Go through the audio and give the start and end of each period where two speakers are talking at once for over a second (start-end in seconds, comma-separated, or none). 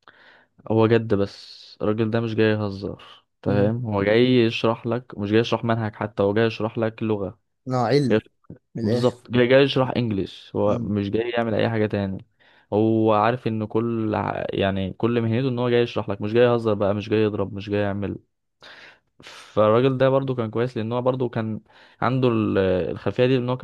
none